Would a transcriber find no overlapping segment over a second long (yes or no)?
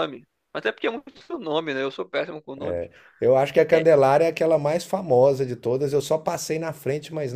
yes